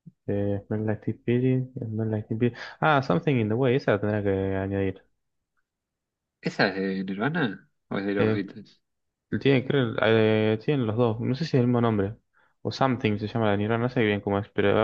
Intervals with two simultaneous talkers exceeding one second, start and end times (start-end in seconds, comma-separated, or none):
none